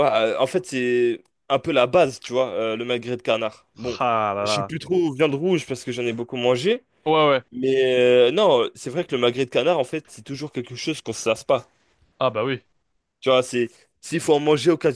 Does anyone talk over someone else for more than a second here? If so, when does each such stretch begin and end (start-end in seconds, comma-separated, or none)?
none